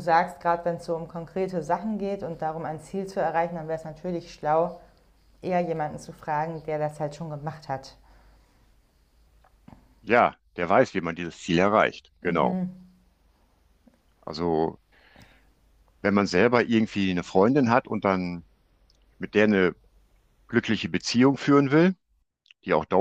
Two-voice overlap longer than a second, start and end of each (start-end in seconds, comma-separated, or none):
none